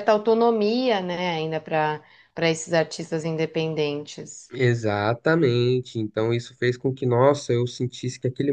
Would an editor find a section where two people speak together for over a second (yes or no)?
no